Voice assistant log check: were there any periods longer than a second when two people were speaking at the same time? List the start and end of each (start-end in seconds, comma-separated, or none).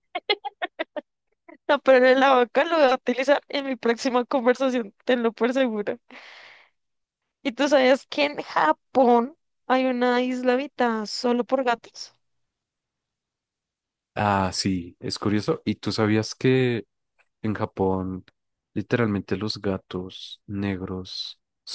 none